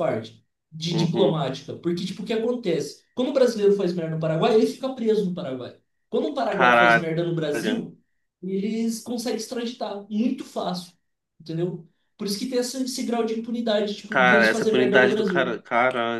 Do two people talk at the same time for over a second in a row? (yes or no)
yes